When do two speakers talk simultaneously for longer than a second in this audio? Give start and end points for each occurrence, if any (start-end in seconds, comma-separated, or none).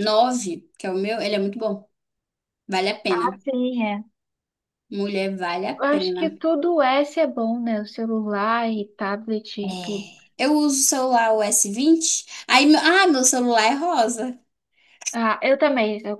none